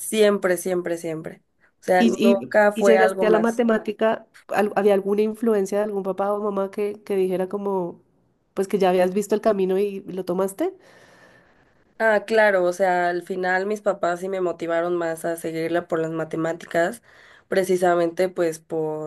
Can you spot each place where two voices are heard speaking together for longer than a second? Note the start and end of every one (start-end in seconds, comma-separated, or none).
2.0-3.6